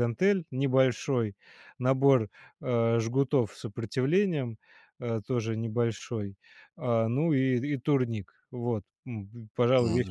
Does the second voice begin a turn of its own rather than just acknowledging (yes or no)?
yes